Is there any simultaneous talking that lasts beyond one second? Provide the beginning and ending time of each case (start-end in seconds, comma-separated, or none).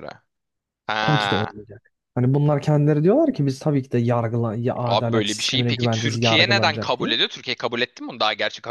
4.8-7.1